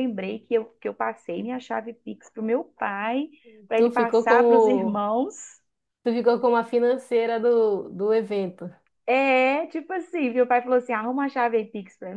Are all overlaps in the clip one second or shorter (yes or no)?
no